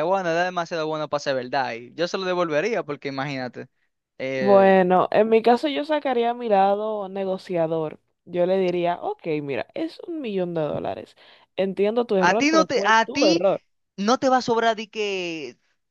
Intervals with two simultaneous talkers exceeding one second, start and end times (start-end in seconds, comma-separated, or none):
12.2-13.4